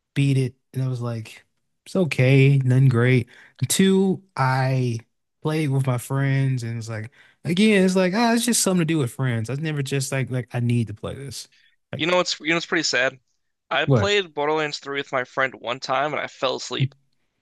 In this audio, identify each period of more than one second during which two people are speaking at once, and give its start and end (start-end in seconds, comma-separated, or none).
none